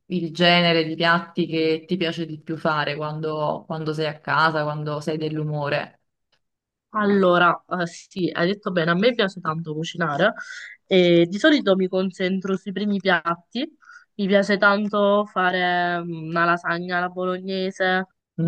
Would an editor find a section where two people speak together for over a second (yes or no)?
no